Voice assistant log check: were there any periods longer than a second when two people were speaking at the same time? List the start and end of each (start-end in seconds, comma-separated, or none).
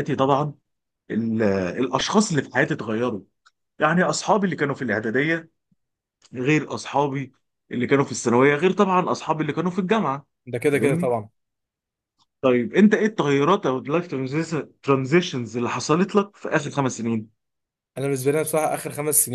none